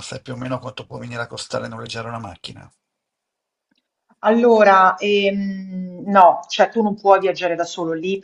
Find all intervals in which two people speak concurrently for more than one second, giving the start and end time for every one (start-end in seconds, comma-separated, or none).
none